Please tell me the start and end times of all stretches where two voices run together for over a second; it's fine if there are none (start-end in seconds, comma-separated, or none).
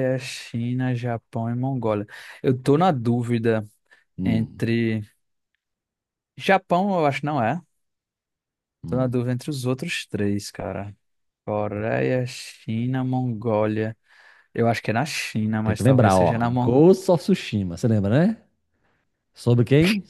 15.6-16.8